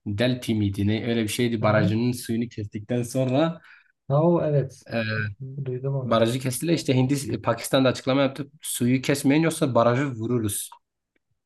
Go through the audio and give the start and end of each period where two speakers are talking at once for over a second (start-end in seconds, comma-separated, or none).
none